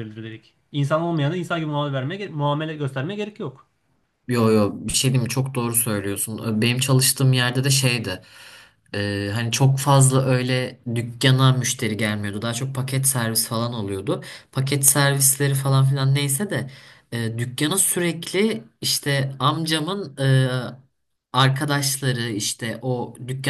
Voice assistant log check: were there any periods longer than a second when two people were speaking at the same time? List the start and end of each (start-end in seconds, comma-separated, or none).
none